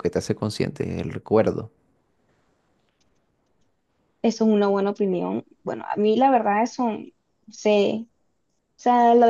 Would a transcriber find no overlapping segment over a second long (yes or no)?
yes